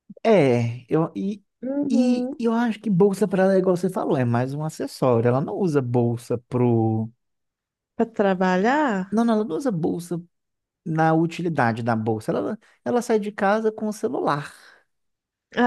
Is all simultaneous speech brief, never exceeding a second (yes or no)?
yes